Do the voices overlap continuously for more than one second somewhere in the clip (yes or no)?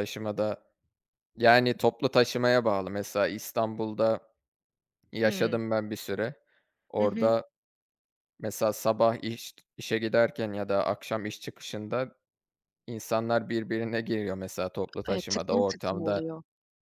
yes